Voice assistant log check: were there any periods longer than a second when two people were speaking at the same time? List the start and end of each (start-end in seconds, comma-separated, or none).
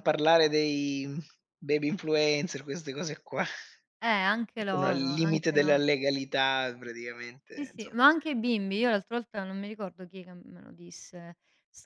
4.6-5.8